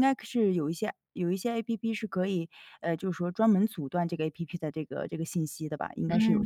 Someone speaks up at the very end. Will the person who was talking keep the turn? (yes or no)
no